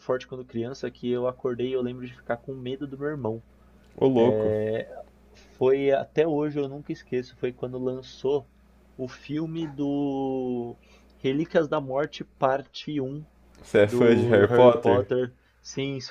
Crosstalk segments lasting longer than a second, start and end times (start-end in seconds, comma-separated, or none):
13.8-15.1